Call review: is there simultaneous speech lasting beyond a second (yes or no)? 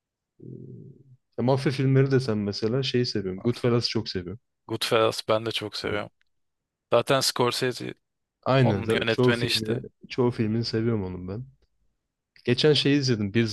yes